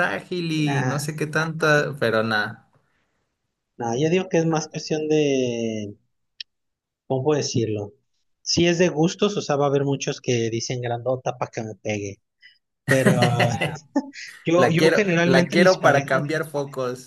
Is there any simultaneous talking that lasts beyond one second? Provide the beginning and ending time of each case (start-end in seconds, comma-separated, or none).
14.6-16.3